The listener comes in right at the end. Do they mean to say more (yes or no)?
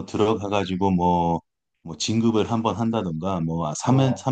no